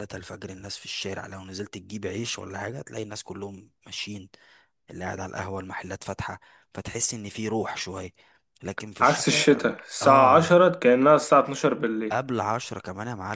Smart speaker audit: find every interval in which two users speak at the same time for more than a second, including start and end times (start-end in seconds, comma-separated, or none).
9.0-10.5